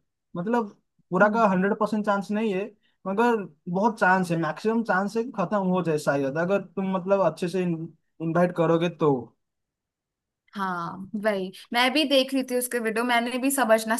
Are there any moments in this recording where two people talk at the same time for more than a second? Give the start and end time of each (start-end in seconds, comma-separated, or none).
none